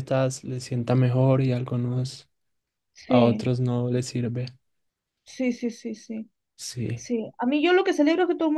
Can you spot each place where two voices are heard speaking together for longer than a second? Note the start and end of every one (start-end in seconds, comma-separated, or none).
none